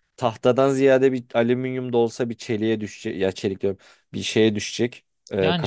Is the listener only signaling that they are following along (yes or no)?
no